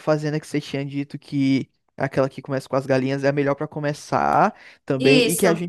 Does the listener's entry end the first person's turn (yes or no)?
no